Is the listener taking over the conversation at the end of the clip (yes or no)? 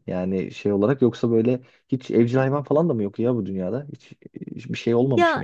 yes